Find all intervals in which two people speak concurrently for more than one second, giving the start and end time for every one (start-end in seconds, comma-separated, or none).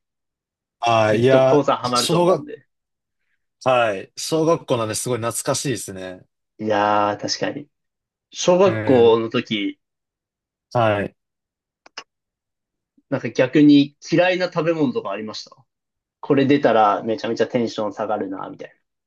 1.0-2.5